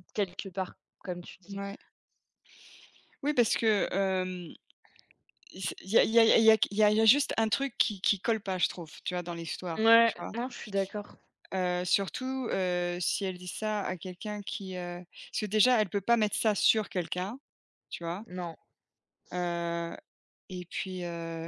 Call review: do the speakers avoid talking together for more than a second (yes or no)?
yes